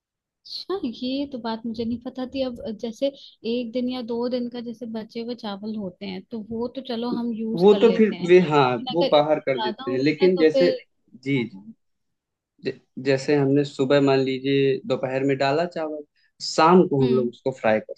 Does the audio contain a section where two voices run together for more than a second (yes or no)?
yes